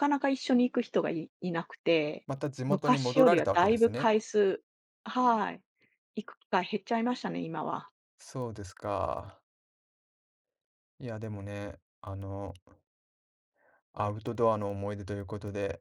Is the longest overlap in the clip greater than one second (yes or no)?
yes